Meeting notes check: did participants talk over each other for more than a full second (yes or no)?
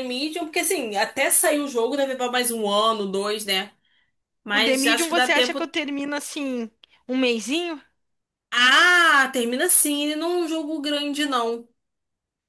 yes